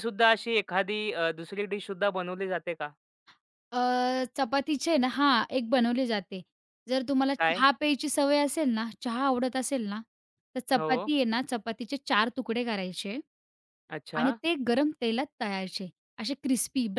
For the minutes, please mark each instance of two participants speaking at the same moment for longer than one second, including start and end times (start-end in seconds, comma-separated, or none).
none